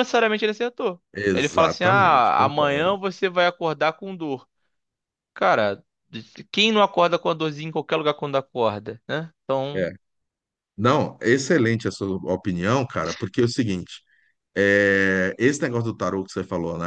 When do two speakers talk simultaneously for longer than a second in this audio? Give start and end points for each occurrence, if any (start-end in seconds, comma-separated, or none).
1.1-3.0